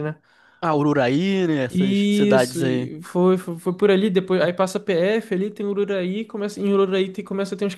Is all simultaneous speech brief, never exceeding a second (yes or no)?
no